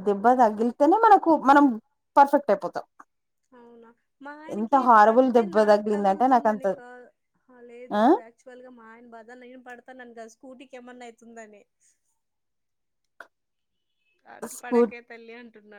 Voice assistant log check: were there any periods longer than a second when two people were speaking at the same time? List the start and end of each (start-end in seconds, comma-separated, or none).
4.6-6.7